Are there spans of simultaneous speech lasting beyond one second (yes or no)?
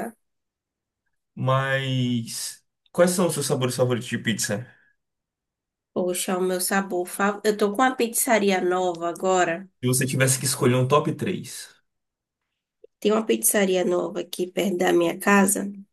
no